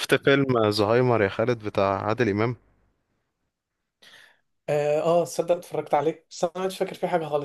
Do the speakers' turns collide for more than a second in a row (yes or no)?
no